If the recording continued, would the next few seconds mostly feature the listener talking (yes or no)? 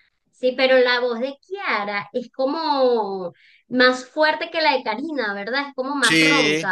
yes